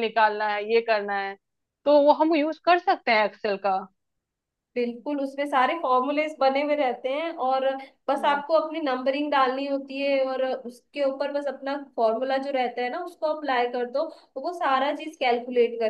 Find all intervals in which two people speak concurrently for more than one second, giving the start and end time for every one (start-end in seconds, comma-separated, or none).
none